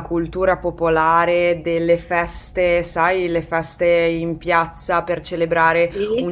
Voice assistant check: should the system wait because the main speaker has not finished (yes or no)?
yes